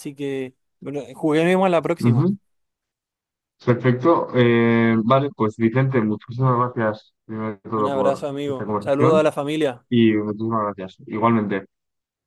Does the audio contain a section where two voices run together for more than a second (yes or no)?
yes